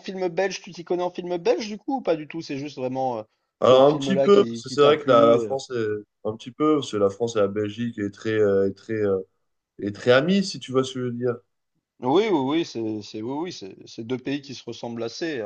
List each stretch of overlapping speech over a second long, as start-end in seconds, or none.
3.6-5.5